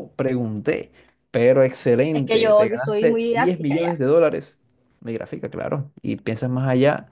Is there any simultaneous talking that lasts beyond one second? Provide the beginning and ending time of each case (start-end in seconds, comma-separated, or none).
2.1-4.0